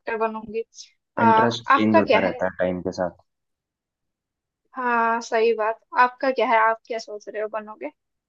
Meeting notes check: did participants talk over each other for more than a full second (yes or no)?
yes